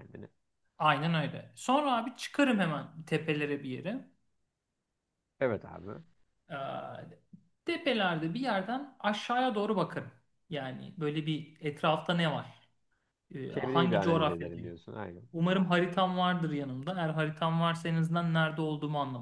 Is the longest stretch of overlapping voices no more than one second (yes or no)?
no